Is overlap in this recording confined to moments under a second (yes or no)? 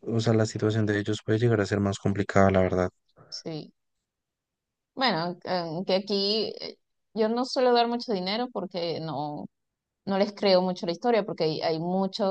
yes